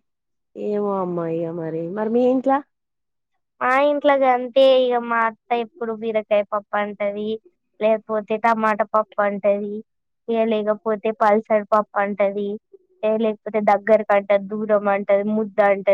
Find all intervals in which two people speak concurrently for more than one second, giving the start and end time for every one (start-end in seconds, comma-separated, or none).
none